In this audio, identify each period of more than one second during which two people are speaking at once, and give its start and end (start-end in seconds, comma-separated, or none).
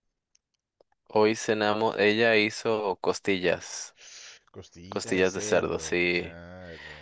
4.9-6.4